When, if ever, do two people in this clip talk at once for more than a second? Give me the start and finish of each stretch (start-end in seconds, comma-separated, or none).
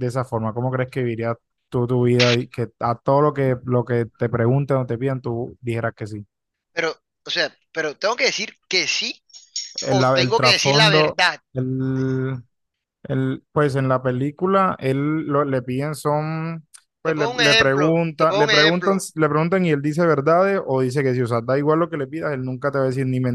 9.9-11.4, 17.0-19.1